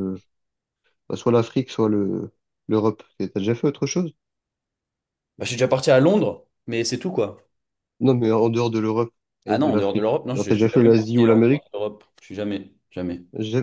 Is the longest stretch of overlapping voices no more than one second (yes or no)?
no